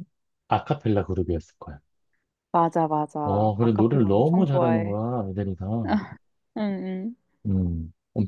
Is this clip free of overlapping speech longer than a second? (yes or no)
no